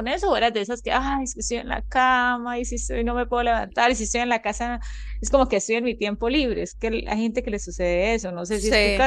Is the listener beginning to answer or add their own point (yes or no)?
yes